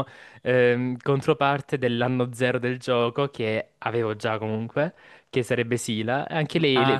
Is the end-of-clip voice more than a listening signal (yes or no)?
no